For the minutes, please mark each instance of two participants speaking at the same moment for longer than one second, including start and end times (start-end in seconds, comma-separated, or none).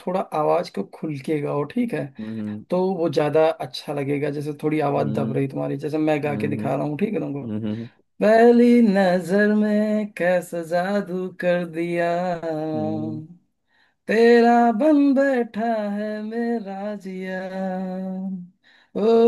none